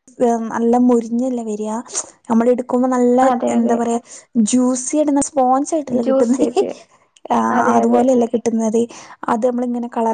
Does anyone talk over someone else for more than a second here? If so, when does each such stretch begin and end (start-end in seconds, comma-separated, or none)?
none